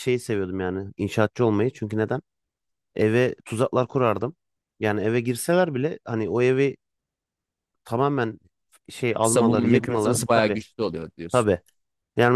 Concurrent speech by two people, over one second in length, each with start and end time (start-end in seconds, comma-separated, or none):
9.2-10.6